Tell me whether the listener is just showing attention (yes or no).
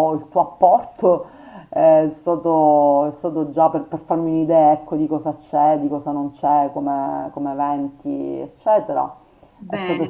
no